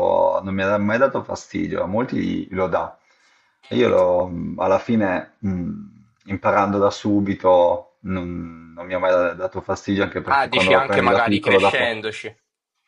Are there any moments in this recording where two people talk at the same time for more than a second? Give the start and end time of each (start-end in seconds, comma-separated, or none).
10.2-11.9